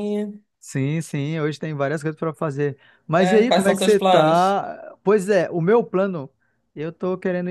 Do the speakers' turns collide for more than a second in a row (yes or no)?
yes